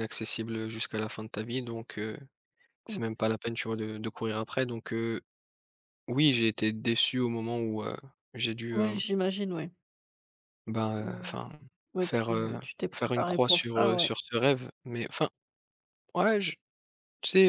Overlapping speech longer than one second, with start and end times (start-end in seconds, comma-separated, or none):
12.0-14.1